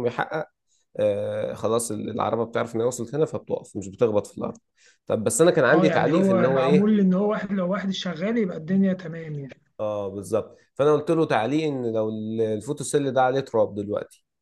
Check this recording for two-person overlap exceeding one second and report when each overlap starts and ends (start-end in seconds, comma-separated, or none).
5.7-6.9